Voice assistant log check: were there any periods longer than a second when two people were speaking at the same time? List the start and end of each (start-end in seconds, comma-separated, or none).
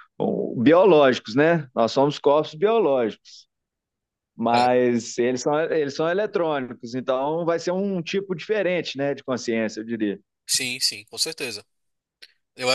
none